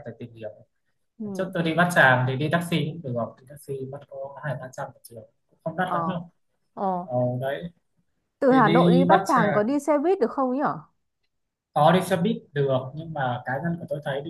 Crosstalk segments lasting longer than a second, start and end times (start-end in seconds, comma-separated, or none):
8.5-9.7